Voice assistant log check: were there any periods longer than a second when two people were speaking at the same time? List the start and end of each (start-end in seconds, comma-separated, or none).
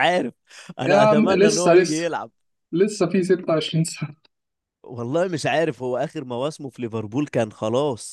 0.8-2.0